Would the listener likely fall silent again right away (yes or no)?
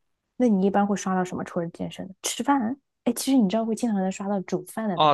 no